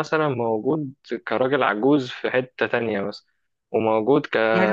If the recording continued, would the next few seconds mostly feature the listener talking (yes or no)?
yes